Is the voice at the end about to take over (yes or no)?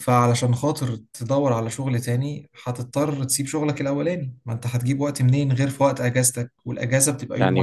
yes